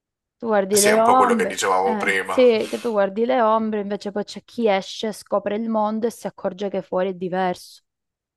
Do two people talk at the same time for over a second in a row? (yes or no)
yes